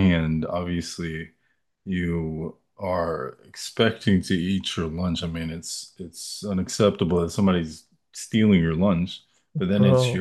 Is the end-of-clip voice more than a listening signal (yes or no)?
no